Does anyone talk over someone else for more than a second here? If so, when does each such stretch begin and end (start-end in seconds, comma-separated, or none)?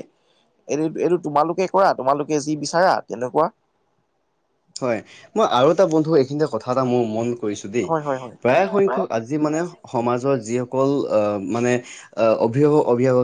none